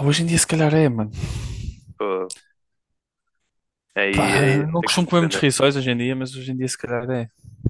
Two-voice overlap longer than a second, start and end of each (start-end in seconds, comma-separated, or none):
4.1-5.5